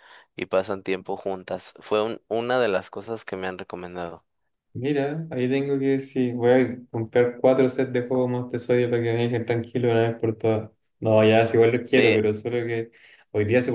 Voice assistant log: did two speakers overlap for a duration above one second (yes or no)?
no